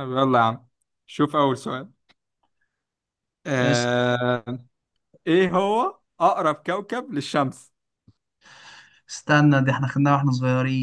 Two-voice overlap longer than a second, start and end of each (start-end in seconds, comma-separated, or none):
none